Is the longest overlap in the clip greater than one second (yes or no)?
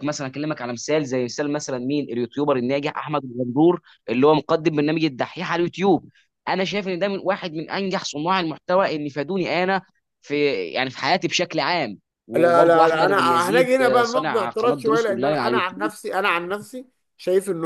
yes